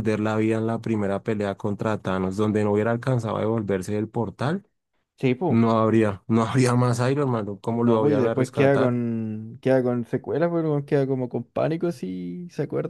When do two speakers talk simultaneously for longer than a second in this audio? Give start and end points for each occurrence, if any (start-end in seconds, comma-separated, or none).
7.7-9.0